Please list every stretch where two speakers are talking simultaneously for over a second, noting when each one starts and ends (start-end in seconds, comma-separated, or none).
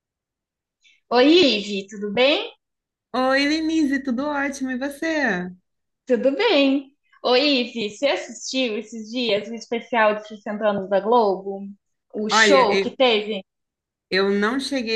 none